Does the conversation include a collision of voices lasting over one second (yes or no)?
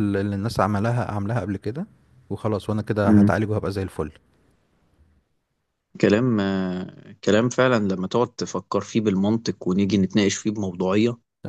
no